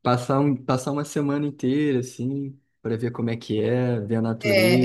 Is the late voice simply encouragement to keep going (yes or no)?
no